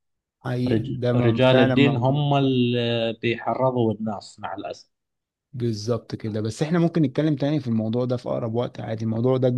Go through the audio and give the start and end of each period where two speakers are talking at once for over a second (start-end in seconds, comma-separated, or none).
0.7-2.2